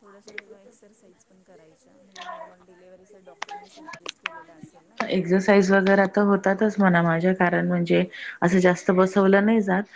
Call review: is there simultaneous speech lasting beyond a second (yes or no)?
no